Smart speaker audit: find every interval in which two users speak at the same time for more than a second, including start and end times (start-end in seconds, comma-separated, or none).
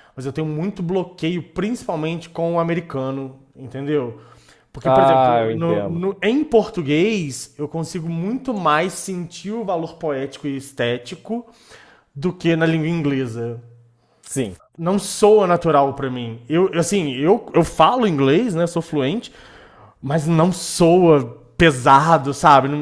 4.8-6.1